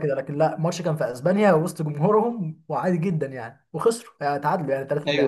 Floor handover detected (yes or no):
yes